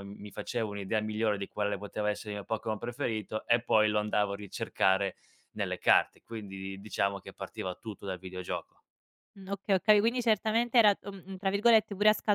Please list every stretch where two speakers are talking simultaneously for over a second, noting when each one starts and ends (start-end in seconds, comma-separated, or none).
none